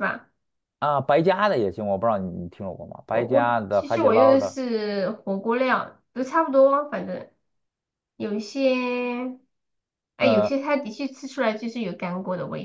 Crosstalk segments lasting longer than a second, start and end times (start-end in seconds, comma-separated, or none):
3.1-4.6